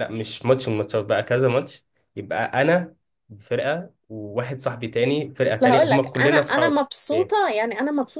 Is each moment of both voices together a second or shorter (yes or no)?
no